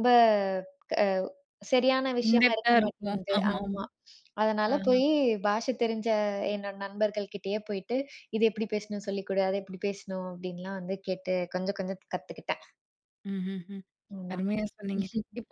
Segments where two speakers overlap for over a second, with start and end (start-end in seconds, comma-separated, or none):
2.2-3.8